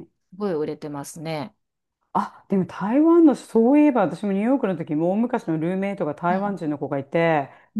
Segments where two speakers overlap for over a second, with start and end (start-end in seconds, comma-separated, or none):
none